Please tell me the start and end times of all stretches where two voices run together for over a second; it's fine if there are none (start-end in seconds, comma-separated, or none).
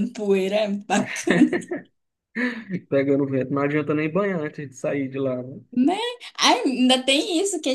none